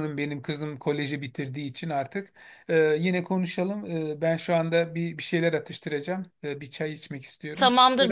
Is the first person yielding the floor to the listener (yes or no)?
yes